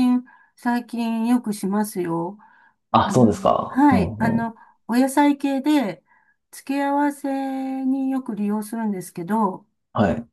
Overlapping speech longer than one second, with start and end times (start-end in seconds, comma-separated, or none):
3.0-4.5